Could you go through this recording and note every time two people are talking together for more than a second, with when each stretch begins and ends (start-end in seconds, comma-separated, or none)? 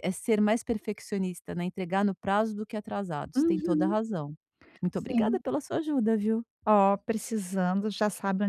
none